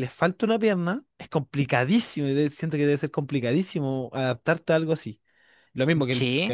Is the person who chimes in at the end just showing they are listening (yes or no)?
yes